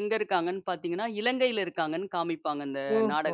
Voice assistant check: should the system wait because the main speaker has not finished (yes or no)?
no